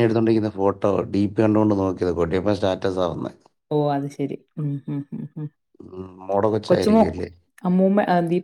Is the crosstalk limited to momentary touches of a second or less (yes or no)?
yes